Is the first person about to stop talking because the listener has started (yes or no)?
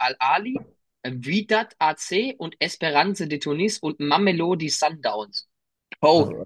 no